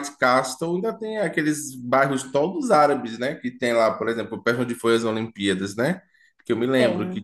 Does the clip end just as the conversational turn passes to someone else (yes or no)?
no